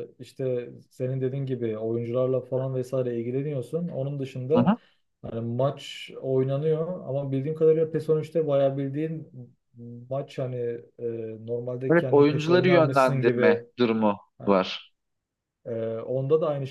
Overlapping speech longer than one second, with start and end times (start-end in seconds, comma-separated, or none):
11.9-13.6